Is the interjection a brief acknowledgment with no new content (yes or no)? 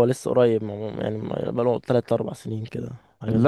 no